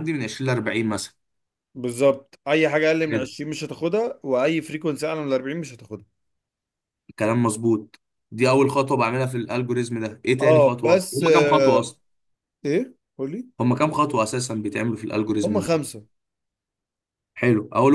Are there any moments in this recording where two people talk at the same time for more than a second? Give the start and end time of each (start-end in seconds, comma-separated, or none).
10.4-11.9